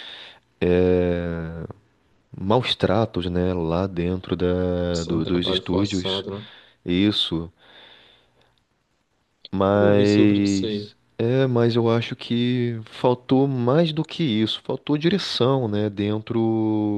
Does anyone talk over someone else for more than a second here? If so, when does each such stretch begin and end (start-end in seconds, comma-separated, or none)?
4.9-6.2, 9.7-11.0